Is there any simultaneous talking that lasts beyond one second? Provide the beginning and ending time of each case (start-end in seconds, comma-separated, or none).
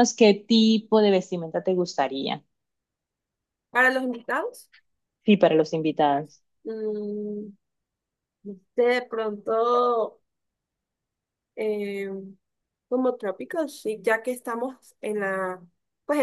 none